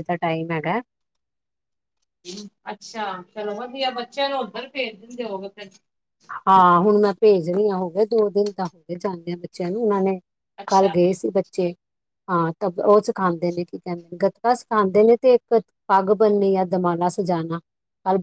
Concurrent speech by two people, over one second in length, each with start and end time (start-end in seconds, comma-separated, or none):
none